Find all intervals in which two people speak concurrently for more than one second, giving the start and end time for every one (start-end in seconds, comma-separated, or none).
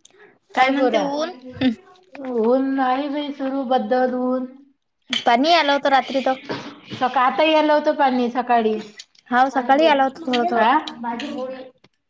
9.5-11.4